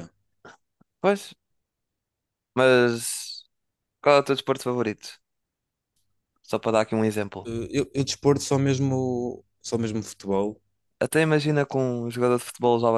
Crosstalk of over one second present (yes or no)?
no